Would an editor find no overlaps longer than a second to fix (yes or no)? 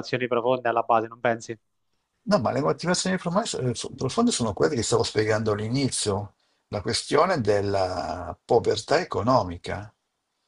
yes